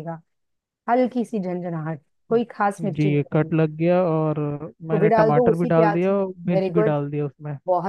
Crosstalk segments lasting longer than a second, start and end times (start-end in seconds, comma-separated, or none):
4.9-7.0